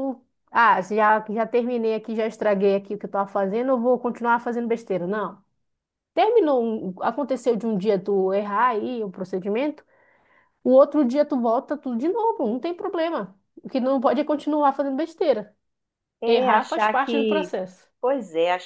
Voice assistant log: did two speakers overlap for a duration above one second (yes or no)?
yes